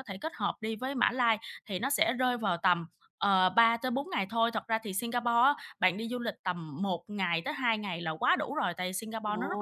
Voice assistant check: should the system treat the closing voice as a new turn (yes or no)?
no